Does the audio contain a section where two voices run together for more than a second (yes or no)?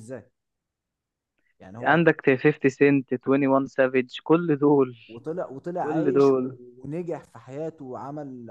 no